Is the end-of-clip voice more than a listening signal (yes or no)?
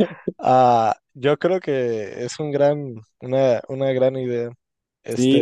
yes